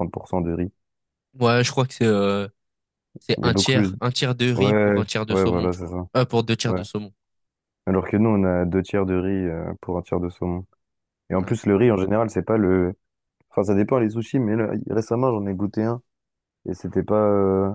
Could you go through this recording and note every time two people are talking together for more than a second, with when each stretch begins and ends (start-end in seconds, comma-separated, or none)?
4.5-6.0